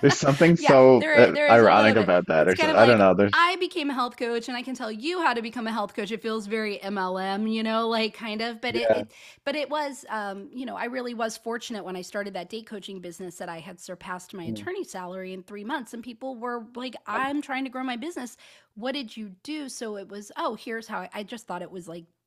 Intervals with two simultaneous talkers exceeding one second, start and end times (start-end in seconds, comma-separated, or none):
0.6-3.5